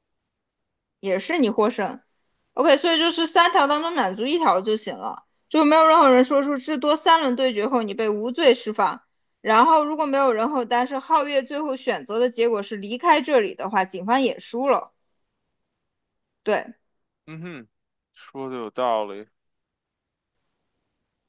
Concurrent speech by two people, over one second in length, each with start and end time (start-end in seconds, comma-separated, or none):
none